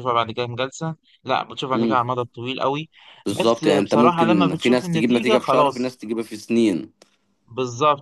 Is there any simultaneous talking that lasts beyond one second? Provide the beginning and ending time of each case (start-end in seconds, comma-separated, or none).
3.3-6.0